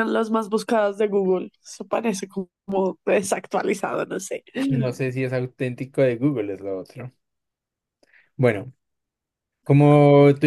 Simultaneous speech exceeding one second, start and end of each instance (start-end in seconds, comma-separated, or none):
none